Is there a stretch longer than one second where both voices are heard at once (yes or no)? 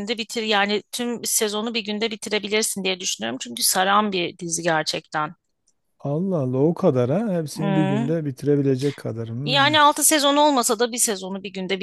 no